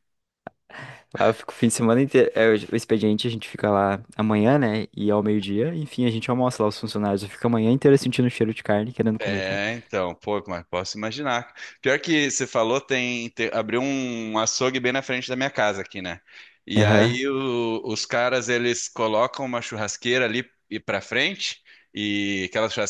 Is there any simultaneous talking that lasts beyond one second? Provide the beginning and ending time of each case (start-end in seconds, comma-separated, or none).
none